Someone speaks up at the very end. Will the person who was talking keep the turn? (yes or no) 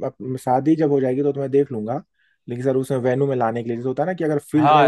no